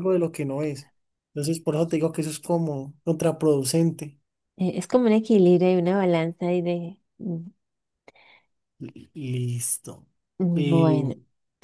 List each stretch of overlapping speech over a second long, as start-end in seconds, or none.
none